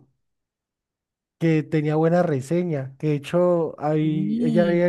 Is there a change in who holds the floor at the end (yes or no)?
no